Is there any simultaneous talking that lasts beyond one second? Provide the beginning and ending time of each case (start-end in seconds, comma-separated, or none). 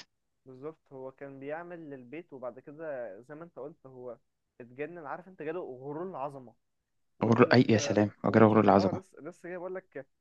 7.3-9.0